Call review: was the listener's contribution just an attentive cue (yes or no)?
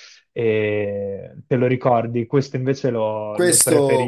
no